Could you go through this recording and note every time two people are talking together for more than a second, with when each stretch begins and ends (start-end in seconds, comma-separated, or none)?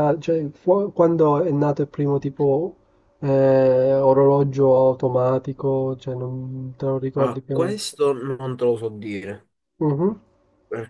none